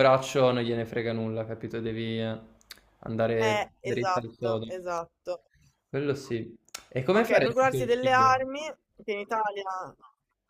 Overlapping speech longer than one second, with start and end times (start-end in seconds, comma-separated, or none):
3.4-4.7, 7.1-8.4